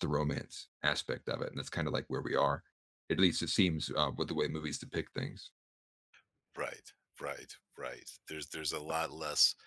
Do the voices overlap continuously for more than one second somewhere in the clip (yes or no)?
no